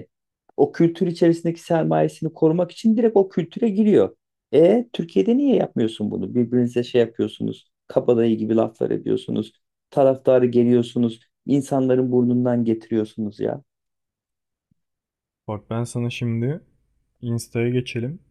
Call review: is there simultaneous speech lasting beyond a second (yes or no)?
no